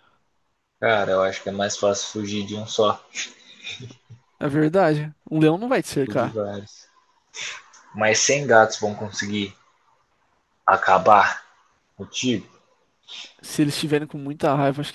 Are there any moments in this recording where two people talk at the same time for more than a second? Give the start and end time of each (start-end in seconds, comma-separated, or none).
none